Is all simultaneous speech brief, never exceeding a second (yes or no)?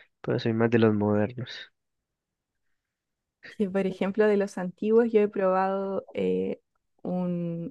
yes